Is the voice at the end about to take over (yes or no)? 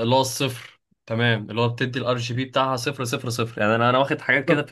no